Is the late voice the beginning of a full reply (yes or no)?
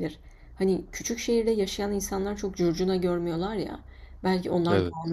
no